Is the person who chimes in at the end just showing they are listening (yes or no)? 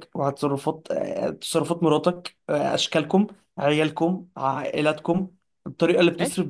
yes